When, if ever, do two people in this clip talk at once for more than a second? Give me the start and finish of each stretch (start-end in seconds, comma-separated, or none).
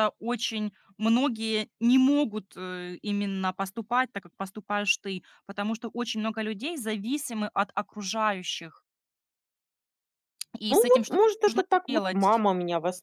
10.7-12.4